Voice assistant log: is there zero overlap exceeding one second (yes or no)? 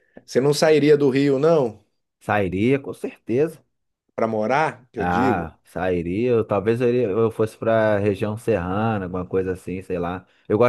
yes